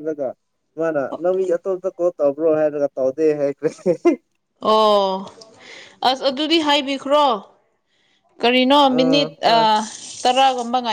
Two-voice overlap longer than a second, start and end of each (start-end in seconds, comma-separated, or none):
none